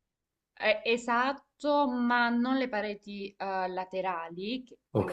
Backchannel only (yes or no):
yes